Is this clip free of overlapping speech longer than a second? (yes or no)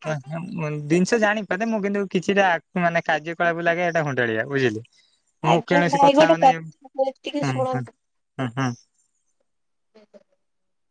no